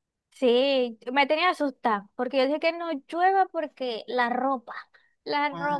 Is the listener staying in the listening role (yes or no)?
no